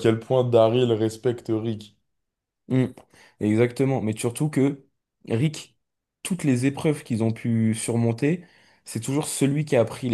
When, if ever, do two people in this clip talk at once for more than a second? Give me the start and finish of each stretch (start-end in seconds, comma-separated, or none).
none